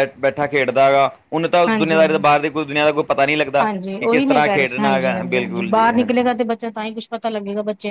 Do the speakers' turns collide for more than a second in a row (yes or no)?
yes